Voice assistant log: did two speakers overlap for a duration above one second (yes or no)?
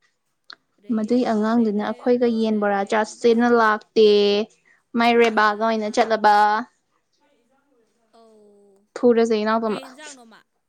yes